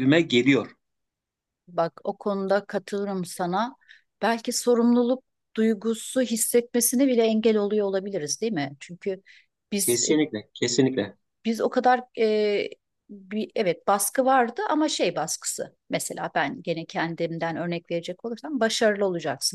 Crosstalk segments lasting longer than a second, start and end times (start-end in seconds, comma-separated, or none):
none